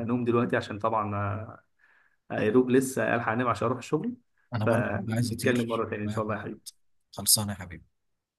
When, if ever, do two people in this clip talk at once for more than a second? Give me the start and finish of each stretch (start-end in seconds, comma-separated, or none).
4.6-6.2